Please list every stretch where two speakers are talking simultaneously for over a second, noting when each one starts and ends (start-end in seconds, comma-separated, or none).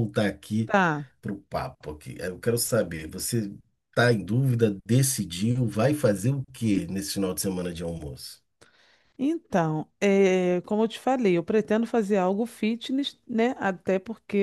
none